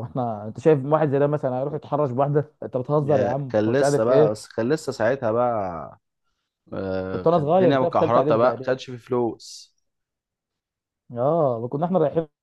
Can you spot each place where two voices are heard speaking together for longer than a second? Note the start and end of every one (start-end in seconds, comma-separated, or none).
3.0-4.3, 7.1-8.8